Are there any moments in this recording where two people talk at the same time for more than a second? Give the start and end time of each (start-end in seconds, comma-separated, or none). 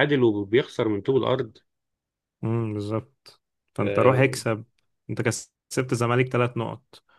none